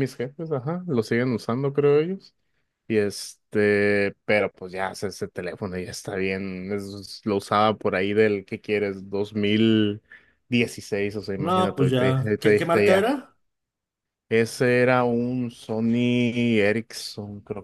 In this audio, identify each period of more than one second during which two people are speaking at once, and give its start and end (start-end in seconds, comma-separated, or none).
11.4-13.2